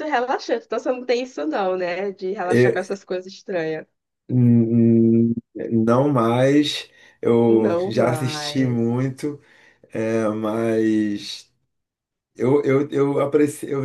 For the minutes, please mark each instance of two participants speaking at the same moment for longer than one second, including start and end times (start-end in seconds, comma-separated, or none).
7.5-8.9